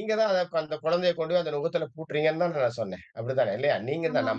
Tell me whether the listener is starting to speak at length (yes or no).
no